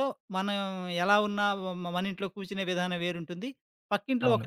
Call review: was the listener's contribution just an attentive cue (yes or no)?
yes